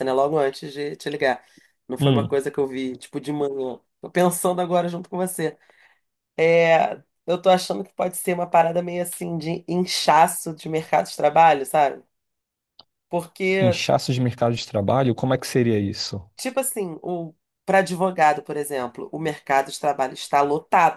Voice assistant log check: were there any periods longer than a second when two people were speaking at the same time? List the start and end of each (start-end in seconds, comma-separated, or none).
none